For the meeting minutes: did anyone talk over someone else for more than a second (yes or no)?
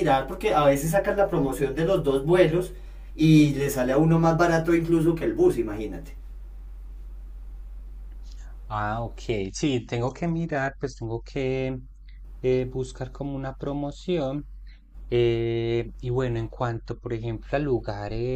no